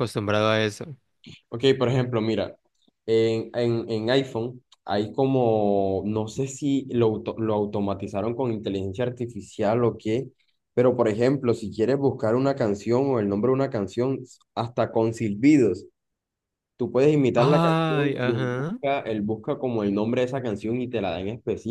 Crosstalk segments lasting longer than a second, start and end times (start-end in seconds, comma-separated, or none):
17.4-18.8